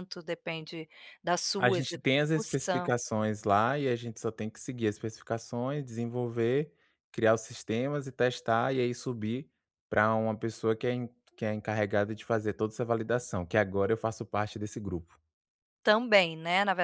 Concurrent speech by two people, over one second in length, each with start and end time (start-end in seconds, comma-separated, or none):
1.6-2.9